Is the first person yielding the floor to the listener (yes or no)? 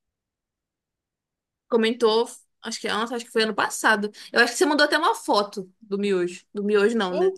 yes